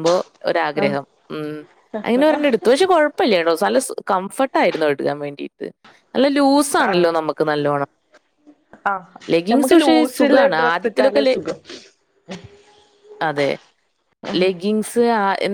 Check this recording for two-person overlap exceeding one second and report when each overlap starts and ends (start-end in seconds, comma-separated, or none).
9.5-11.3